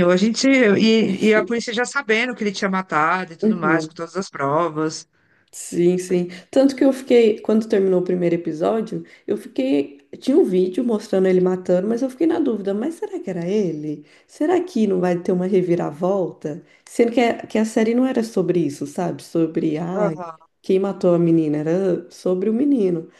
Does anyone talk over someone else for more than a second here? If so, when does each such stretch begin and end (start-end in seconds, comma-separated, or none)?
none